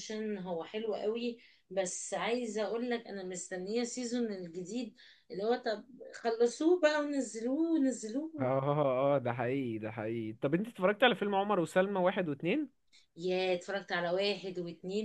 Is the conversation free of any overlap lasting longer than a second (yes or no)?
yes